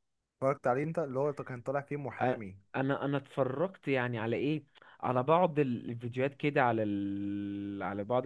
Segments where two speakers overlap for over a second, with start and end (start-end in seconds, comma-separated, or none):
none